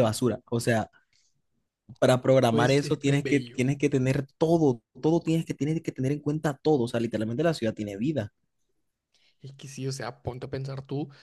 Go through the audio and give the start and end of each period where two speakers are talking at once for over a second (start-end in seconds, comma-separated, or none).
2.5-3.7